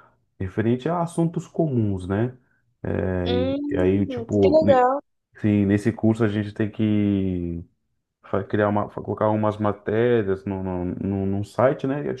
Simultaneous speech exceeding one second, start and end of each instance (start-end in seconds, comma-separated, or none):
3.2-4.9